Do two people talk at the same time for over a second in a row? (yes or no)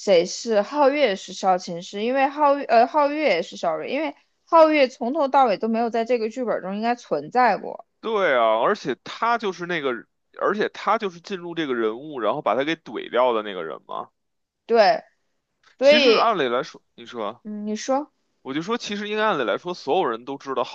no